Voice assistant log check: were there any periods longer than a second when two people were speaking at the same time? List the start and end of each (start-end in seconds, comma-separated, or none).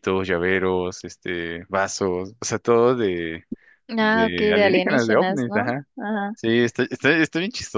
4.0-5.9